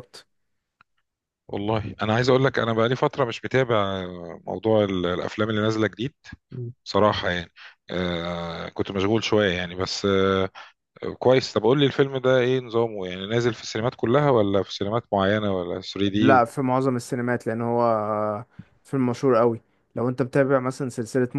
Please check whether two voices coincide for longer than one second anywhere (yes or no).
no